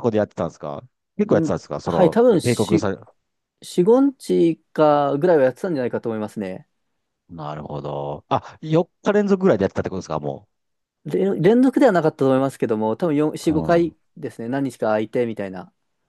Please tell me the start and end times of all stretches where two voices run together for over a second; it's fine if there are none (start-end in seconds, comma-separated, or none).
1.3-2.9